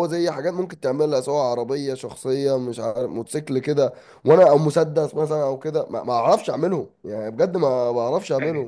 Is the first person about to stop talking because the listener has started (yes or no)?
no